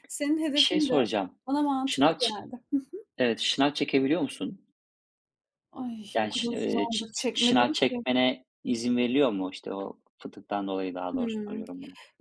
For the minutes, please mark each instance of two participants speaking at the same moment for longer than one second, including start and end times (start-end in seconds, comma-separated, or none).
6.1-8.1